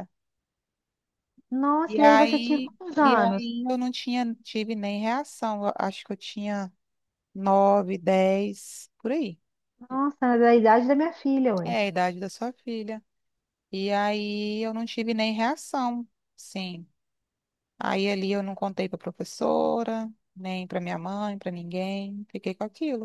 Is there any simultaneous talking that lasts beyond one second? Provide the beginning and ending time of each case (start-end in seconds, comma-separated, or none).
1.9-3.5